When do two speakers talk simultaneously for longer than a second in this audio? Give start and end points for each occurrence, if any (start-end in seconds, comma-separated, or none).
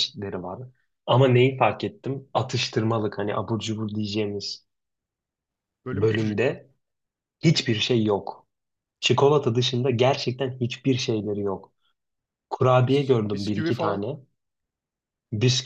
12.9-14.1